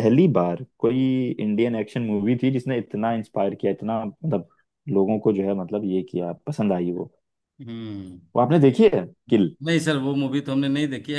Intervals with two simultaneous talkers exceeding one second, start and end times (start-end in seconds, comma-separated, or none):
none